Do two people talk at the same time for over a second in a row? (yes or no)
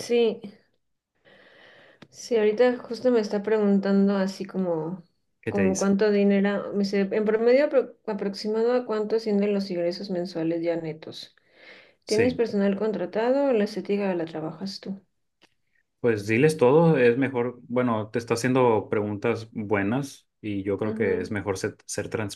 no